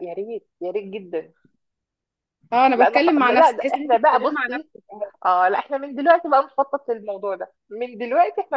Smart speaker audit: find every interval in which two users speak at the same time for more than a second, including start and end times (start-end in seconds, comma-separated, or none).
2.7-4.7